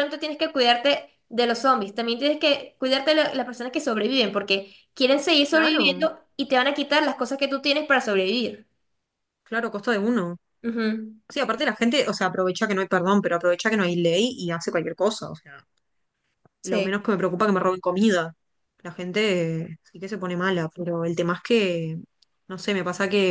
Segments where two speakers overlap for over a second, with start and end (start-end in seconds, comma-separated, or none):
none